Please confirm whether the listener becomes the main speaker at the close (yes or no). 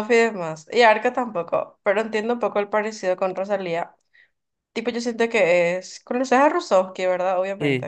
yes